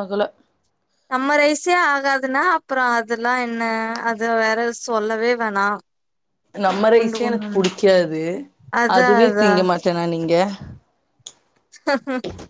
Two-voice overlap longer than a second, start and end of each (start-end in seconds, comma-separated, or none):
none